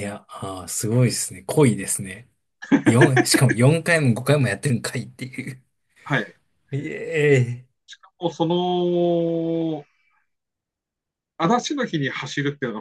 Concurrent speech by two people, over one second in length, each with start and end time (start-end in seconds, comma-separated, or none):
none